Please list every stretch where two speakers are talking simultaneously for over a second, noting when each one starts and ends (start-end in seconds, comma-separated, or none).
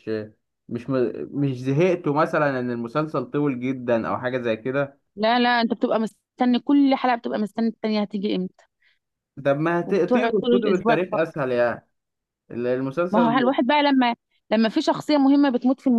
9.8-11.4